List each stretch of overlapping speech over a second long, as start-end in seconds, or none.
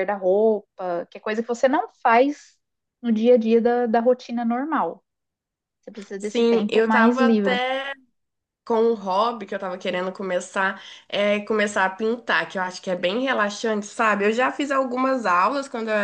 6.2-7.6